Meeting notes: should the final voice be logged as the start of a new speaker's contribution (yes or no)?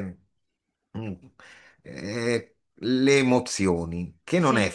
no